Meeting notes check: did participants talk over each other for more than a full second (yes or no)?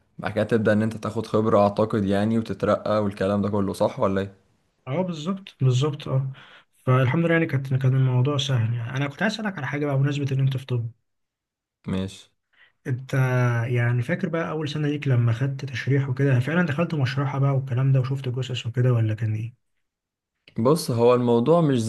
no